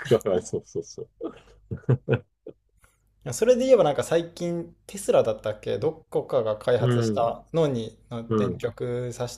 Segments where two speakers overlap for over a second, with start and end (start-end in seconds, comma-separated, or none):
none